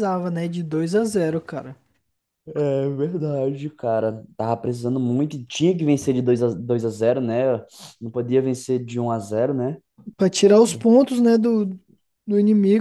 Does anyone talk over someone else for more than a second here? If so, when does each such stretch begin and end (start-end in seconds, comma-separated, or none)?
none